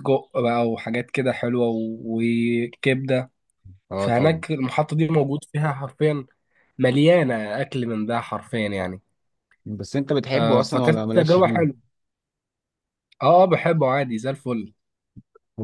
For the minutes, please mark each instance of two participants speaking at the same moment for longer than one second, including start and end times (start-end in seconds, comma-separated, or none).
10.3-11.6